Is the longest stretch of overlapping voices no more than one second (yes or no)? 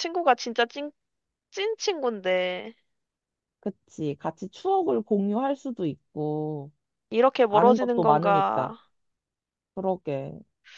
no